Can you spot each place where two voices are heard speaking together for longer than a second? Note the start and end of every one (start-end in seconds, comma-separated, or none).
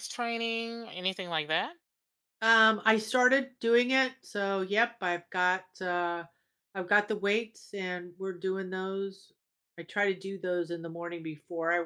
none